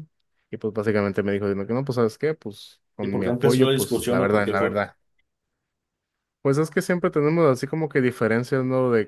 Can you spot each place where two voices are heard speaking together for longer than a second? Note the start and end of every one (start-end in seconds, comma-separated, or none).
3.0-4.8